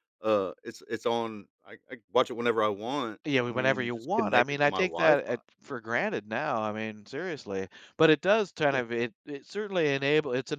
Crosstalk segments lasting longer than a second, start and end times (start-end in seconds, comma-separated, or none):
3.2-5.2